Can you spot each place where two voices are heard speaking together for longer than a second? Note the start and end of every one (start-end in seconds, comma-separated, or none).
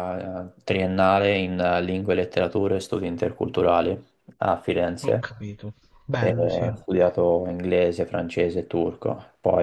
none